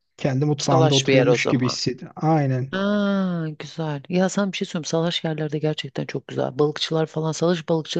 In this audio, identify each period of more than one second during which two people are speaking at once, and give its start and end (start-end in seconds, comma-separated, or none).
0.6-1.8